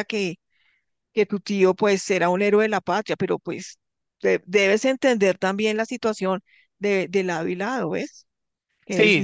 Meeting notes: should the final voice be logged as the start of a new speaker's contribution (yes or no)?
yes